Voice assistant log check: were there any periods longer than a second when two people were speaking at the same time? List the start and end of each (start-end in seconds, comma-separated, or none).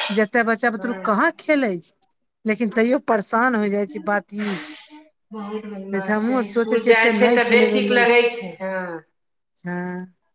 5.3-8.2